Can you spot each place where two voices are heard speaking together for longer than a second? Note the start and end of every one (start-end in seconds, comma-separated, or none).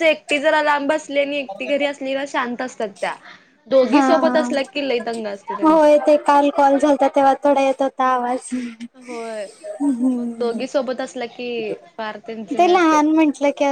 none